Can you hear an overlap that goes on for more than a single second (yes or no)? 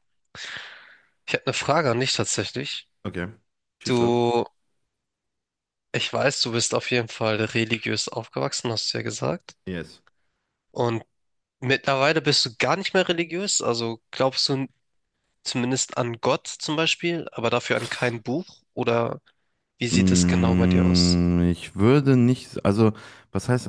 yes